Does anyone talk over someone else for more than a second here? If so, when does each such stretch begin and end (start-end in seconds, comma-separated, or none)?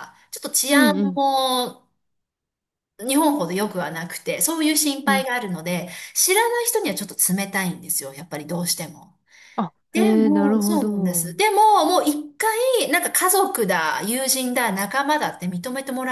9.9-11.3